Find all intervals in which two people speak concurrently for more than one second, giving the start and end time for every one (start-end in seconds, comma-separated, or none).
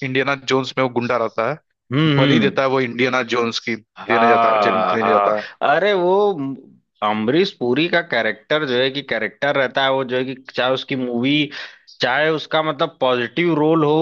4.0-5.3